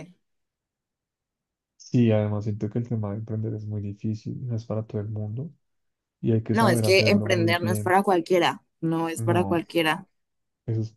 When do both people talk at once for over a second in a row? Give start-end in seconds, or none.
6.5-7.9